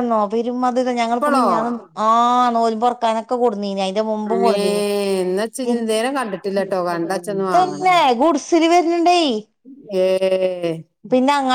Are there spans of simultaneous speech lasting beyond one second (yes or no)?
yes